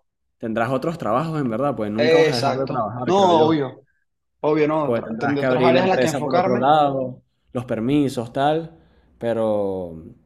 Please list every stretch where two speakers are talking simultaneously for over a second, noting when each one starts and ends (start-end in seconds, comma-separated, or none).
1.9-3.6, 4.8-6.7